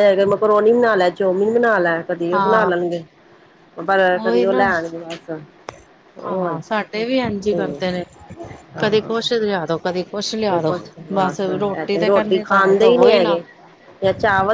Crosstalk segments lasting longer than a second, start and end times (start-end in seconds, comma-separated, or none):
12.1-13.4